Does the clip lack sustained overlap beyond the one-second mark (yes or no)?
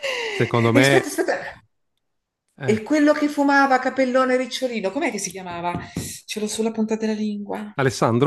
yes